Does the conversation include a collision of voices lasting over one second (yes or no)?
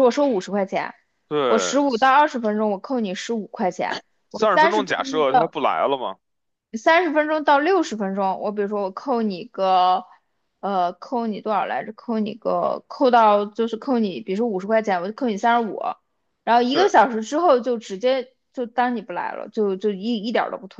yes